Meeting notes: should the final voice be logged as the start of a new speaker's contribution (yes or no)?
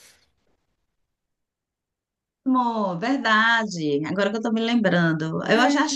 no